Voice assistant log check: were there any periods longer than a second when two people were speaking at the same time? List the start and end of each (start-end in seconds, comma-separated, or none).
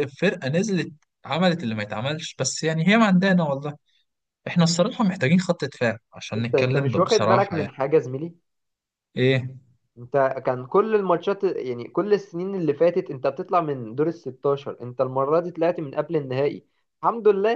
6.4-7.7